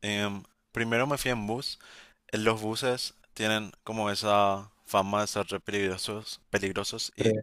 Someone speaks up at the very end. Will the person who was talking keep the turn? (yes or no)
yes